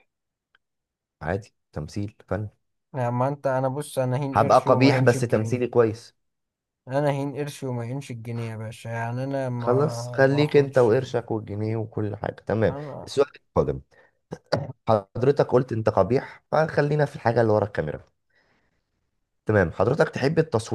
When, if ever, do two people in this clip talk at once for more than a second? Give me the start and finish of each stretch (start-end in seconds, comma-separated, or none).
4.3-5.7, 9.6-10.9